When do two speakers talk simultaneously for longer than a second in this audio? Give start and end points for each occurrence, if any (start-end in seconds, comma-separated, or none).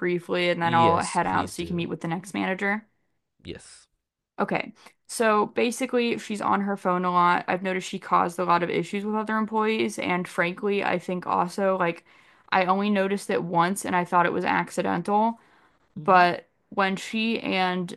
0.6-1.9